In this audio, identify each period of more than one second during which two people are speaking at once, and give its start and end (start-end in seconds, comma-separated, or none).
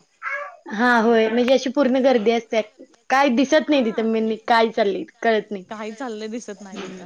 none